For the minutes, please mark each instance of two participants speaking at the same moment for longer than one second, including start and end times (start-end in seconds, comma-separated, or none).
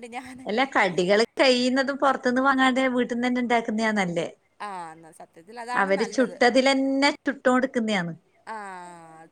none